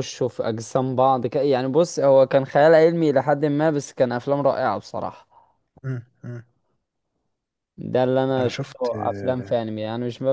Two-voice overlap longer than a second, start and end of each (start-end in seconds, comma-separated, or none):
8.4-9.6